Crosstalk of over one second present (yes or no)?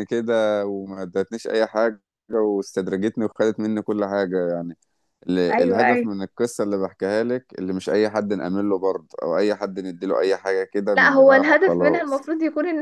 yes